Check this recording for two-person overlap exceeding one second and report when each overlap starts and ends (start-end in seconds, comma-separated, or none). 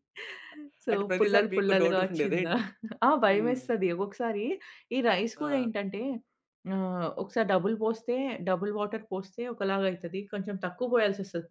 0.9-2.5